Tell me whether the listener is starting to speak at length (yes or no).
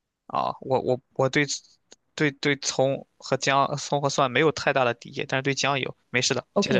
yes